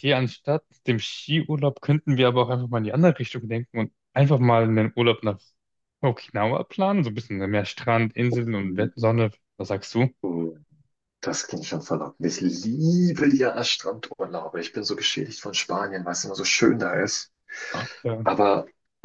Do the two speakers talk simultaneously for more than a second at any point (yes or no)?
no